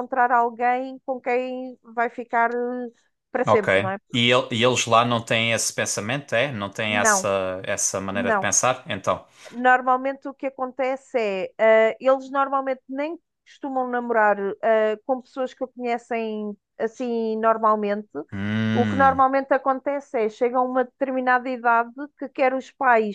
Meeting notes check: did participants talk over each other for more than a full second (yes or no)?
no